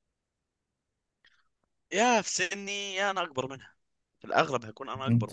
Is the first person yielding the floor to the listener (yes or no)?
yes